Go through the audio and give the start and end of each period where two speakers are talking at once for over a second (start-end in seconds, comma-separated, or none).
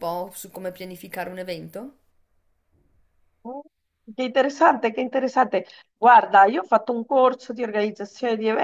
none